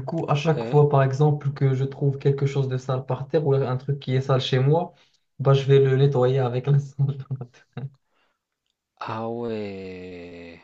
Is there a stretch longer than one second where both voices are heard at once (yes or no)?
no